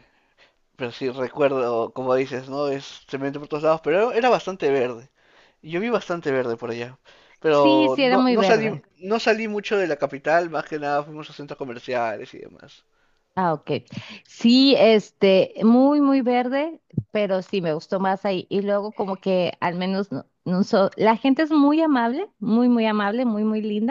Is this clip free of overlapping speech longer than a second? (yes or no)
no